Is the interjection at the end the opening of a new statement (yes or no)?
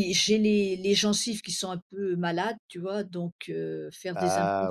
no